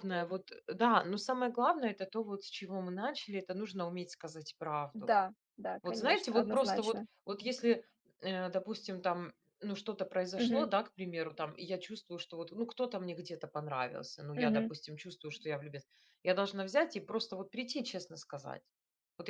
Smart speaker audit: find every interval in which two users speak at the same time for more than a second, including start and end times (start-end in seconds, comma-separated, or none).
5.8-7.0